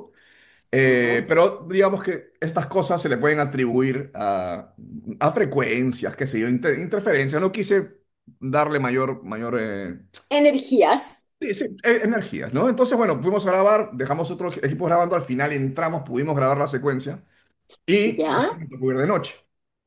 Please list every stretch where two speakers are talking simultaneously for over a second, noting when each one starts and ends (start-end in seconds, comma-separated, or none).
none